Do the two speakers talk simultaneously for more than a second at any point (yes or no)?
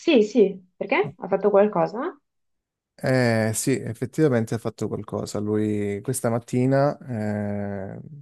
no